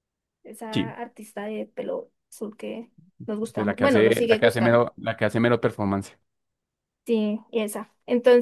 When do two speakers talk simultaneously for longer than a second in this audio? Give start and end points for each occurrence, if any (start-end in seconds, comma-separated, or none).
3.5-4.8